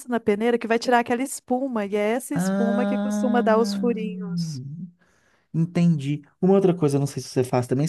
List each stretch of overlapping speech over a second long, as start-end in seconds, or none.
2.3-3.8